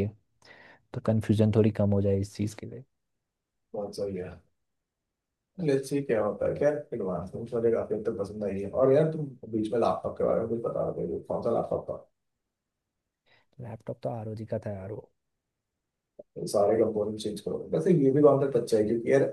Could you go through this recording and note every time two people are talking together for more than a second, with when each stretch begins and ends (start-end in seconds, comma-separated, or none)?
none